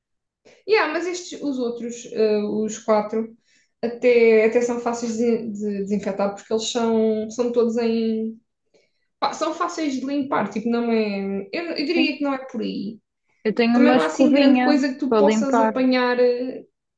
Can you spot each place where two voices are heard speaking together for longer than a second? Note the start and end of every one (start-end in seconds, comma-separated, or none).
13.7-15.8